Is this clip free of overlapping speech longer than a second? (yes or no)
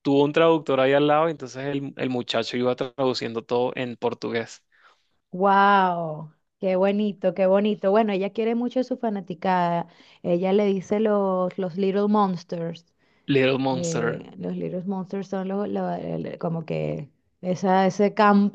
yes